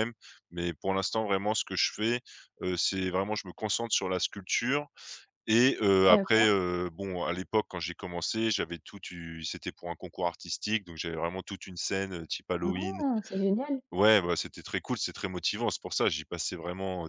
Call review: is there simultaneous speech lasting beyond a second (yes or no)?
no